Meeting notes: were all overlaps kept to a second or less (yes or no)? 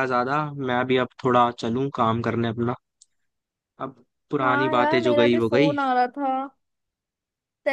no